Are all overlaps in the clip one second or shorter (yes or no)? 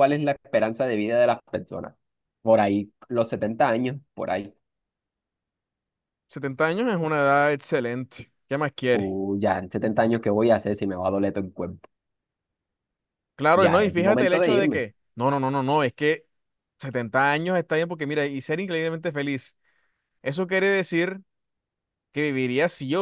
no